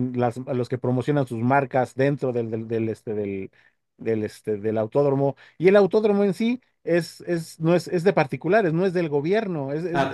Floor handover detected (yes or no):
no